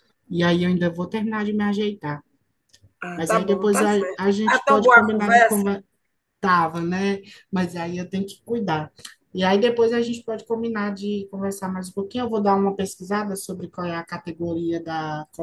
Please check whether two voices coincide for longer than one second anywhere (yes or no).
yes